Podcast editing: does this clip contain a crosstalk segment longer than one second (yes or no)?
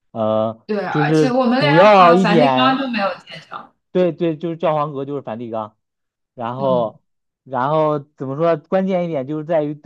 yes